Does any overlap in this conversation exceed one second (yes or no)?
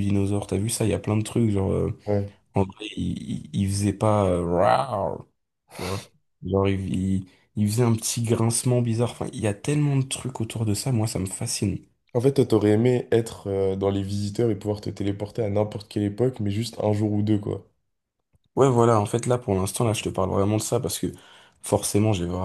no